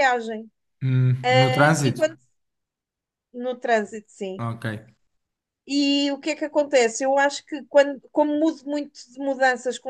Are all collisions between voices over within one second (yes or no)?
yes